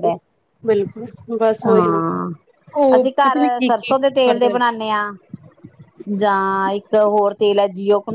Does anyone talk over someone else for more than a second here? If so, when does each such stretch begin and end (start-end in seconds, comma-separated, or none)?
3.0-4.6